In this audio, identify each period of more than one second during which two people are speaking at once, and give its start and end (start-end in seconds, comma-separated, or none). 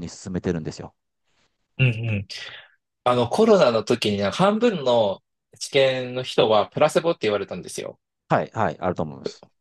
none